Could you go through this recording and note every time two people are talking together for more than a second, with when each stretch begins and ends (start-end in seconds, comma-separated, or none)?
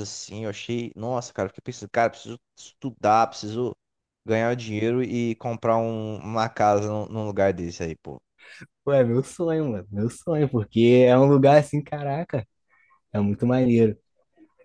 none